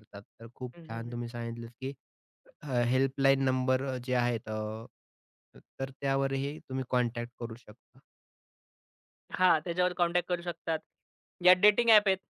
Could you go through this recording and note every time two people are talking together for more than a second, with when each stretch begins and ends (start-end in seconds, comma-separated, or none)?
none